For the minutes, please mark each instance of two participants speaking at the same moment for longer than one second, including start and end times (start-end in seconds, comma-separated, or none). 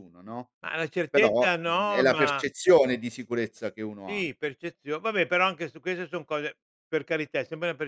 1.1-2.5